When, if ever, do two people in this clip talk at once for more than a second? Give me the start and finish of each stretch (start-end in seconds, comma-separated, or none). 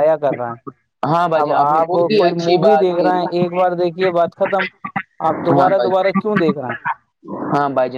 1.4-3.2